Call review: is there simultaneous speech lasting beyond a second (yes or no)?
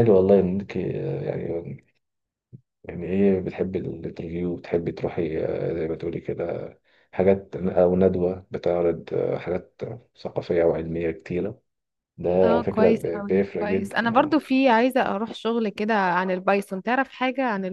yes